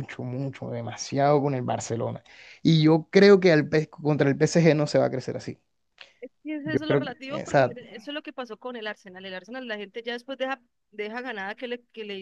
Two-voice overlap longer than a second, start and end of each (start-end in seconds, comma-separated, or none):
6.6-7.9